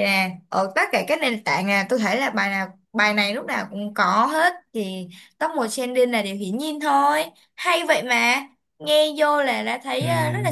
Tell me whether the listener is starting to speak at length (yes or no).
no